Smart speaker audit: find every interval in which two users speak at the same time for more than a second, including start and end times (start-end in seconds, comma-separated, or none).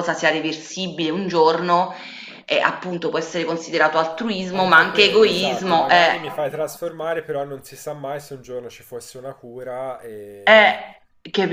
4.5-6.2